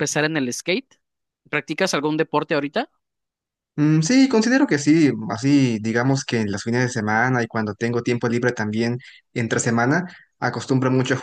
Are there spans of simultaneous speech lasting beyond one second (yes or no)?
no